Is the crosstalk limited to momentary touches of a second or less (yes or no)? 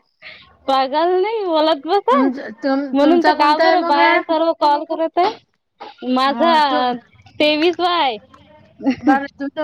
no